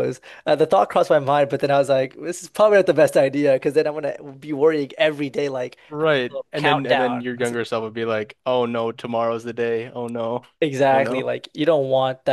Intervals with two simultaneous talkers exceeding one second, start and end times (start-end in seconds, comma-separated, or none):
5.9-7.6